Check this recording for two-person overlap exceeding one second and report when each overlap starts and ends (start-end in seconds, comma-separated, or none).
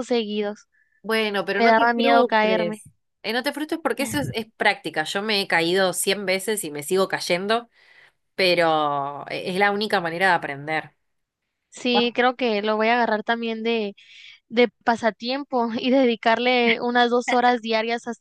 1.6-2.8